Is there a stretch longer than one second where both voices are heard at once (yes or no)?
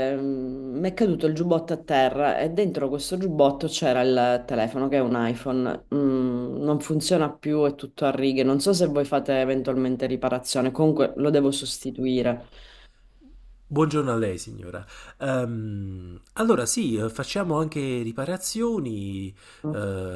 no